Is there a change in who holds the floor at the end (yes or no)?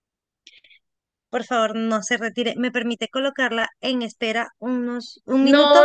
yes